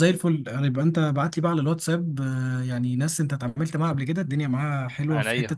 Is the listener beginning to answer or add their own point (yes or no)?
no